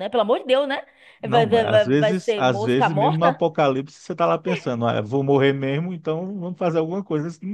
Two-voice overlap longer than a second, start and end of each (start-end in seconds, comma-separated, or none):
1.3-3.4